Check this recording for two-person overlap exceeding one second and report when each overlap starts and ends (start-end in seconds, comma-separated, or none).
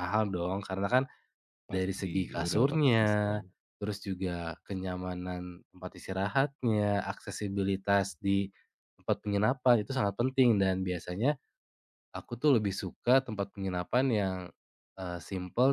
1.7-3.4